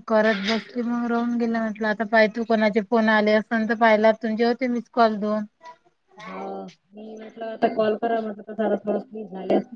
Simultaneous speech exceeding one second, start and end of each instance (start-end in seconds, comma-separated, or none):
none